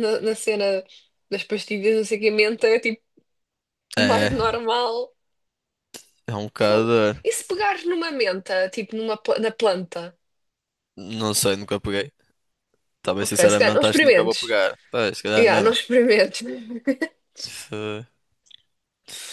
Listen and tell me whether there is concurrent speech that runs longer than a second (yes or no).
yes